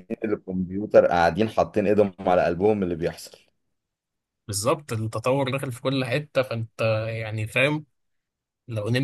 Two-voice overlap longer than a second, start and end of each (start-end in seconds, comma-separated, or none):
none